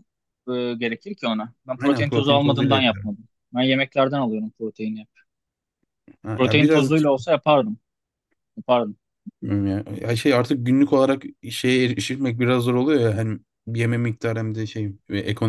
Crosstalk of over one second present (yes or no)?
yes